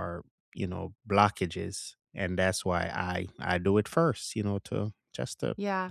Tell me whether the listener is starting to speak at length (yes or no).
yes